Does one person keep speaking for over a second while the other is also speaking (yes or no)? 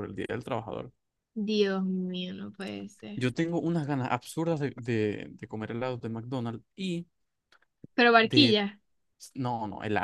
no